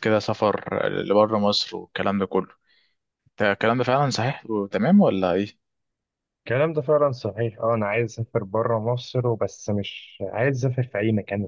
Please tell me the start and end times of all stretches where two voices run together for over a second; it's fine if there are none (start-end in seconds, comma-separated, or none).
none